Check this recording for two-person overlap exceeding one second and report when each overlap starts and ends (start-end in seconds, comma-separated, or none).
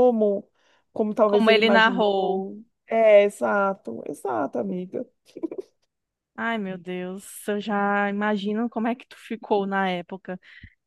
1.3-2.5